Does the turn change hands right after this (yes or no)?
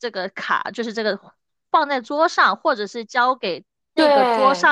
no